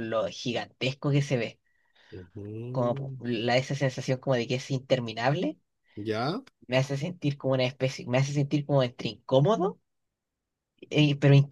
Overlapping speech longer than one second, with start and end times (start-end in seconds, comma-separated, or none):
none